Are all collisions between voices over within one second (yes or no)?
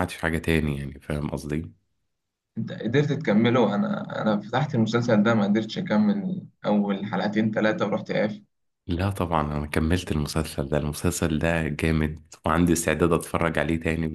yes